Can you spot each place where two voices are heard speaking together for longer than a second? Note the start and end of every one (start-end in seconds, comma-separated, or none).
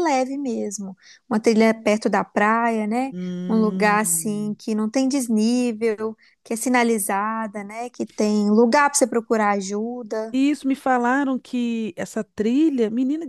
3.1-4.6